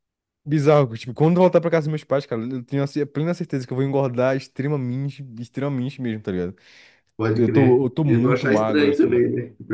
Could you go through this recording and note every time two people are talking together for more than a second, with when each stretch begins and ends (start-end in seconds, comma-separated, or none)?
7.3-9.2